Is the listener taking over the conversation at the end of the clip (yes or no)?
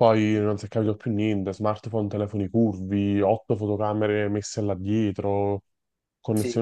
no